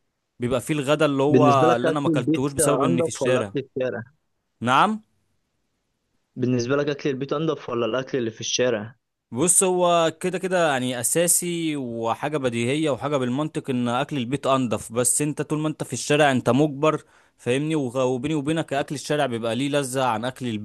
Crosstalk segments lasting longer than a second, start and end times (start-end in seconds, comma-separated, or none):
1.3-3.5